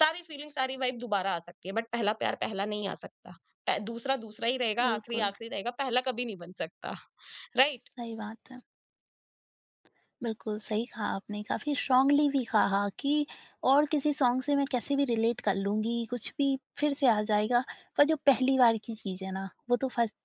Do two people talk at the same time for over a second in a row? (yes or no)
no